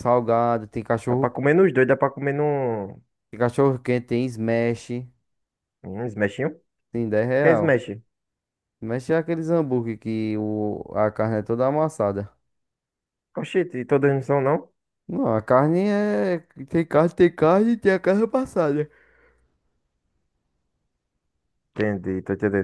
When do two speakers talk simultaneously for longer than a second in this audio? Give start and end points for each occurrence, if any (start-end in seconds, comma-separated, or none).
none